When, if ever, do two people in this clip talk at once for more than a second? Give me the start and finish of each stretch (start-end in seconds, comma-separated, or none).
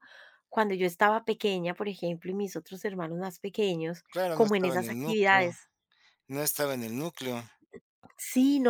4.1-5.5